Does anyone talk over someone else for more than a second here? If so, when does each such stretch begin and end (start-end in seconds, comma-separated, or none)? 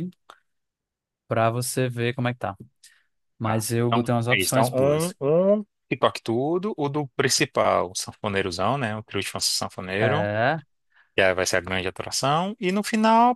3.4-5.1